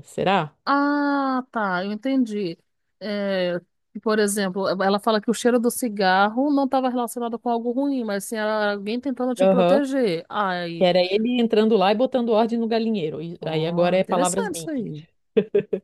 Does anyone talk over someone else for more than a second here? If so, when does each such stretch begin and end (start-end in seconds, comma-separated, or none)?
13.4-14.7